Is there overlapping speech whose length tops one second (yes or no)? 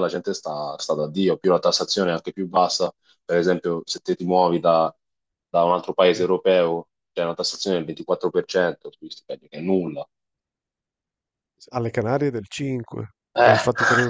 no